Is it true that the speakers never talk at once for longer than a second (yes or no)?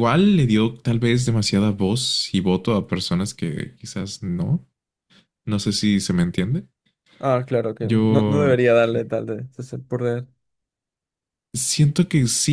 yes